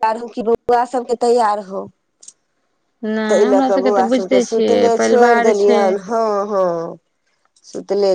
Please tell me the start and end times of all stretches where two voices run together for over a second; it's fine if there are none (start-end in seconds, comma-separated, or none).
3.3-5.8